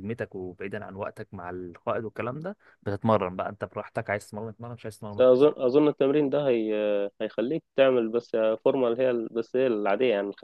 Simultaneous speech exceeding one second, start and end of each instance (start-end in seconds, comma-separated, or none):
none